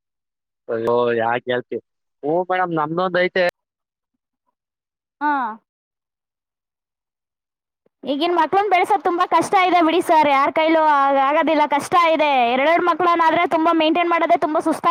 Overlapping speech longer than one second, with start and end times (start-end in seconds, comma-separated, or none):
none